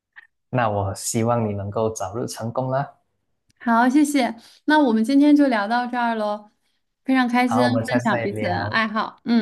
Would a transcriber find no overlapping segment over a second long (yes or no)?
no